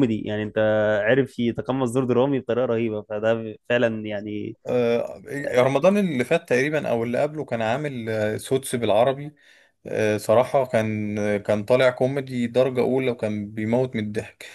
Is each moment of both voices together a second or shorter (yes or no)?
yes